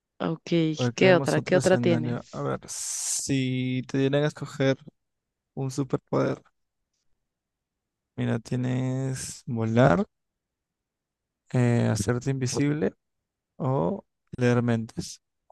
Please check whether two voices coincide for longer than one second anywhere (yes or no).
yes